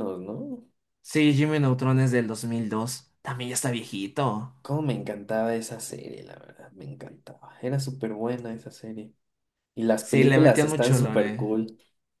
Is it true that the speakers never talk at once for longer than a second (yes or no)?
no